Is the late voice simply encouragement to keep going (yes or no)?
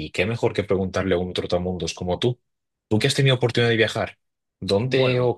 yes